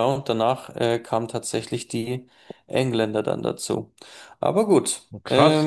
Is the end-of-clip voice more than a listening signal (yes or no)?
yes